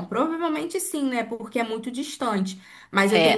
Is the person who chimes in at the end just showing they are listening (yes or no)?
yes